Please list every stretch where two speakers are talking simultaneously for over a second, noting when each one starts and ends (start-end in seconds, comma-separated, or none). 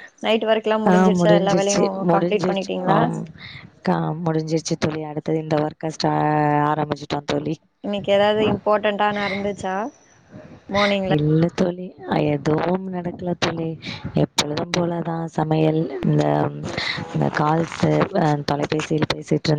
0.9-3.0